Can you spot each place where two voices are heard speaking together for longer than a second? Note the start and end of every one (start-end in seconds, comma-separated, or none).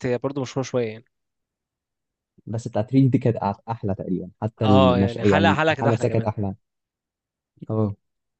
4.6-6.3